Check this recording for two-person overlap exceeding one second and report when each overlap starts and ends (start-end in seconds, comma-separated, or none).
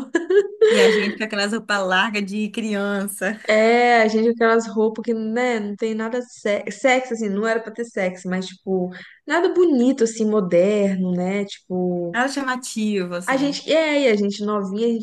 none